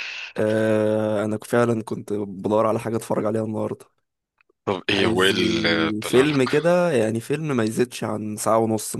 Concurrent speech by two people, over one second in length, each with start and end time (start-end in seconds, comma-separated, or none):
4.9-6.5